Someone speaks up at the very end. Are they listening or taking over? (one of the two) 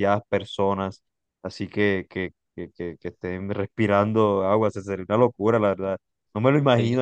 listening